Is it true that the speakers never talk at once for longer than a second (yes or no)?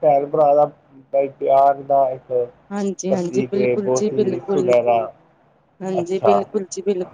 no